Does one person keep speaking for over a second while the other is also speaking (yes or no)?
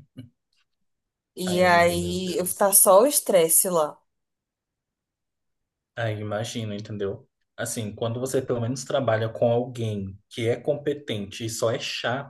yes